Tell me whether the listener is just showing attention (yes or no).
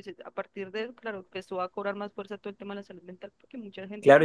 no